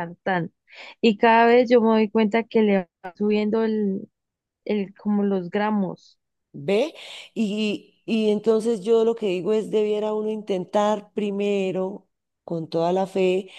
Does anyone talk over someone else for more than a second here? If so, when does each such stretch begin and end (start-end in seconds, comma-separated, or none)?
none